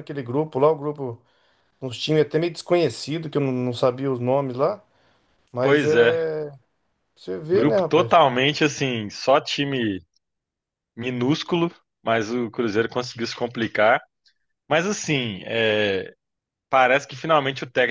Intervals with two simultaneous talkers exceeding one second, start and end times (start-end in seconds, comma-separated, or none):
none